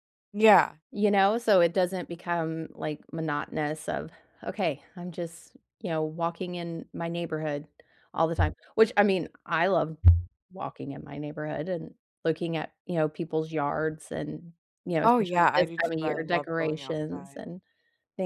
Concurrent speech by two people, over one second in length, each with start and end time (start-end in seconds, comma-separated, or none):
15.1-17.4